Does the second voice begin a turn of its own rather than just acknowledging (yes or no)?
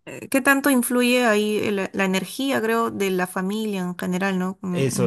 yes